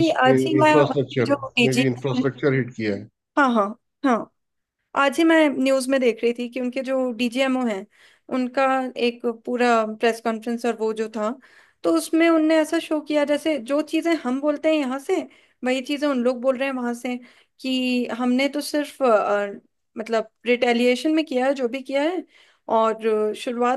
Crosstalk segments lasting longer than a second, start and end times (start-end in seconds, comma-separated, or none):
0.6-1.8